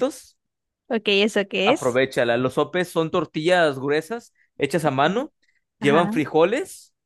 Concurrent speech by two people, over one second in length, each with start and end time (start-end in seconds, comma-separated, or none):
none